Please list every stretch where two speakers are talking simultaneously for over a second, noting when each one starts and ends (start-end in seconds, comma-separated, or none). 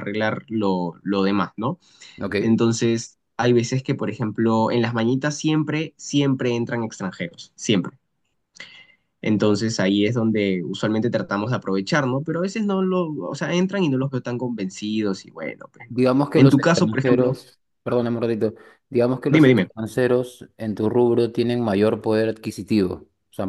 15.9-17.4